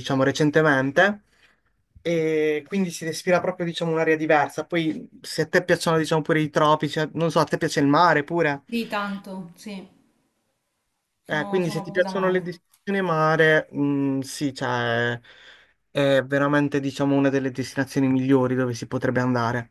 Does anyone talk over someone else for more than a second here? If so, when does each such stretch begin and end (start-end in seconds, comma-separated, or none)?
11.3-12.5